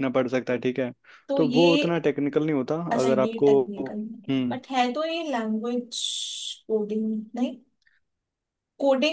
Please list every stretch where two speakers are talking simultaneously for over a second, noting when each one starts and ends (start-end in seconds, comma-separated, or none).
2.9-4.6